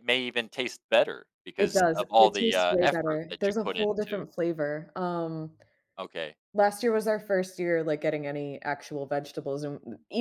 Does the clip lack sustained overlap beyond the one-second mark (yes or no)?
no